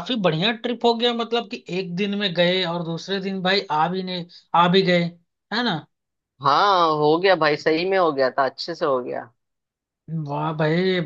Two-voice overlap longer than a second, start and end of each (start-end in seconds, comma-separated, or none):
none